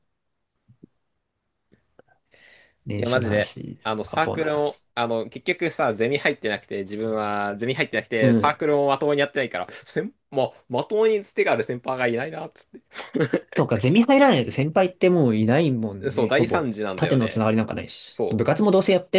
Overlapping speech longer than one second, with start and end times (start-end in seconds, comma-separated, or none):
2.9-4.8, 16.1-17.5